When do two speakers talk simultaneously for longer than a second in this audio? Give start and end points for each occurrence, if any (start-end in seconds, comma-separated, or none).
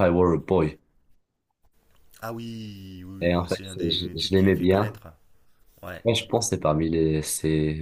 3.2-5.0